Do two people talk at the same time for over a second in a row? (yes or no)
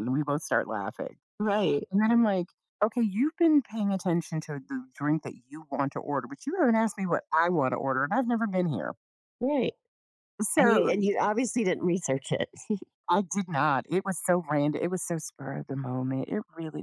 no